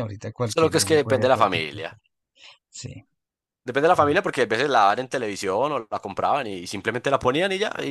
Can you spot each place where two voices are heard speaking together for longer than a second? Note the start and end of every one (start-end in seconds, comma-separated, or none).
0.5-1.9